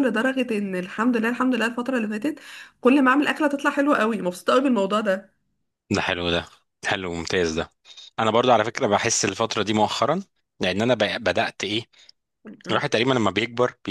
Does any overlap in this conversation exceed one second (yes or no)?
no